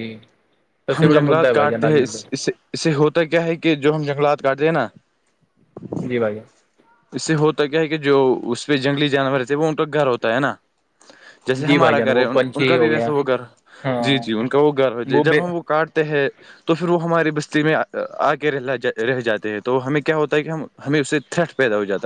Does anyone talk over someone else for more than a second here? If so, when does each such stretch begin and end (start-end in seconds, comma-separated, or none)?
11.7-13.1